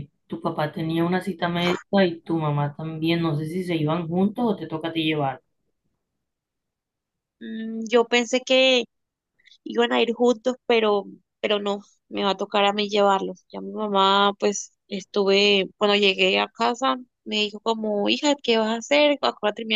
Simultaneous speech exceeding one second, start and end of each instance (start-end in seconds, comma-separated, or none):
none